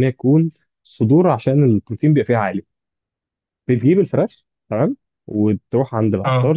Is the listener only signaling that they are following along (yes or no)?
yes